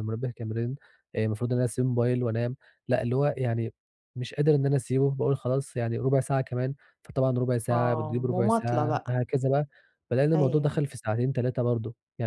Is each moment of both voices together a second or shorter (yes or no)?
no